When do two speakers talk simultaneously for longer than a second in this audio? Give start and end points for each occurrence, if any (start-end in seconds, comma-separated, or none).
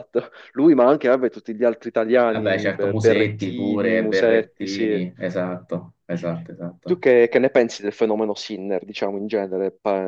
2.2-5.0